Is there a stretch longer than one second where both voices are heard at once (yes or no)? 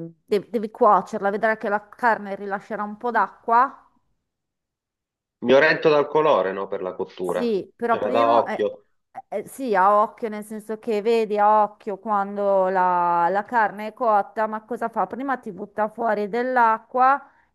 yes